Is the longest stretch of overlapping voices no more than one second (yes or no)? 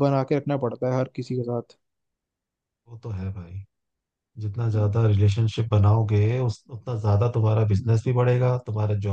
yes